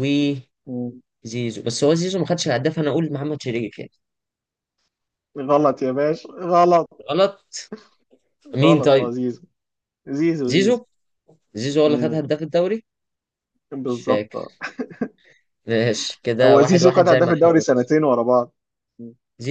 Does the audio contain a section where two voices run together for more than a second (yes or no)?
yes